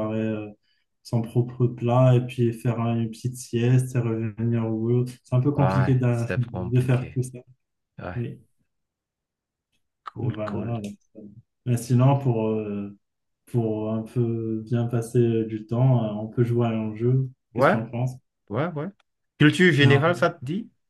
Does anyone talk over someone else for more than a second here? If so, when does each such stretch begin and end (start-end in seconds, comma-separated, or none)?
5.6-7.2